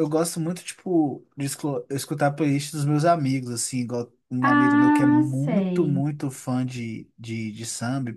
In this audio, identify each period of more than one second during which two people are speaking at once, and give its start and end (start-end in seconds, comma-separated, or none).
4.4-6.0